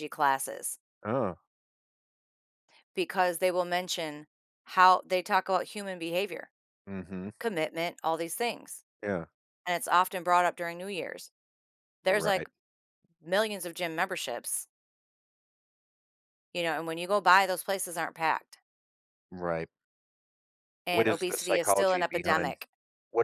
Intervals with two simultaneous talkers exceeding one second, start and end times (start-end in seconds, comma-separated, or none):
20.9-22.6